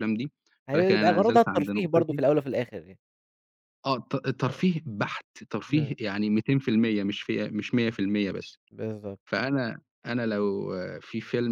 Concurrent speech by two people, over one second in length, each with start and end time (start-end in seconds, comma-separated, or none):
0.7-2.2